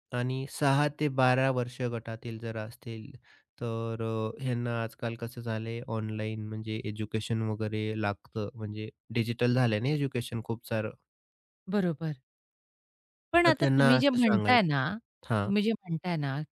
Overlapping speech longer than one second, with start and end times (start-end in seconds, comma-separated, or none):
13.4-14.8